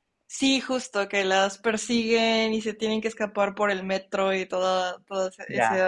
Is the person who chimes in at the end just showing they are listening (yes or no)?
no